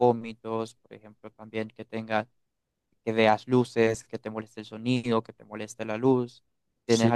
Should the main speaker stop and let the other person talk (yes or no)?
yes